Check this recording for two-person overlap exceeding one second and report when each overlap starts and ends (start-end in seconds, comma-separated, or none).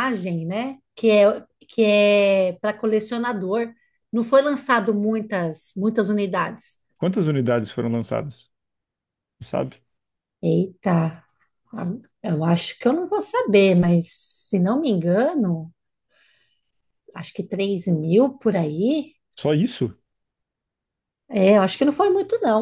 none